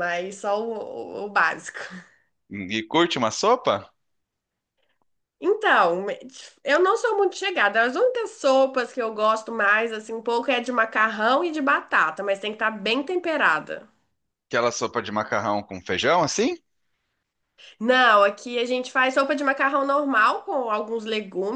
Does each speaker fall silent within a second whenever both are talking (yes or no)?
yes